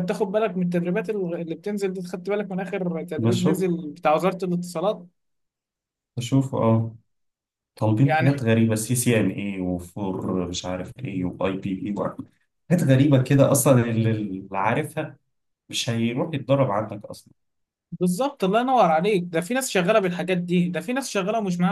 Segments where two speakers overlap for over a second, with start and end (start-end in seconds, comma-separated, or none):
none